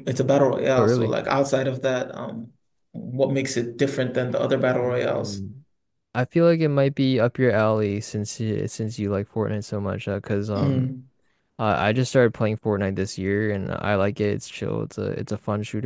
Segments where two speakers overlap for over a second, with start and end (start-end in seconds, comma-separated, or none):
none